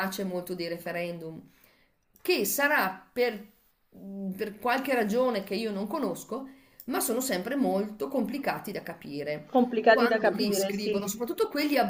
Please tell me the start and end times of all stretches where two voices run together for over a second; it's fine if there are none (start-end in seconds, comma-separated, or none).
9.4-11.0